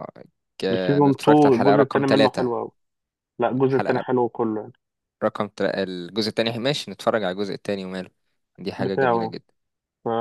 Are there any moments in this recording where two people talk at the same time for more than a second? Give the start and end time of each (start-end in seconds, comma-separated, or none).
0.7-2.5